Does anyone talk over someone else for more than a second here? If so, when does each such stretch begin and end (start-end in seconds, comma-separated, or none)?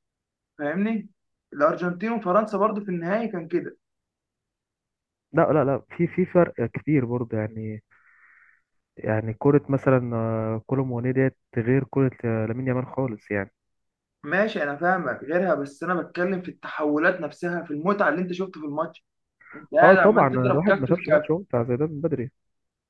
19.8-21.3